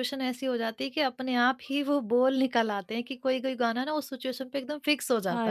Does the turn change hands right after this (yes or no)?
yes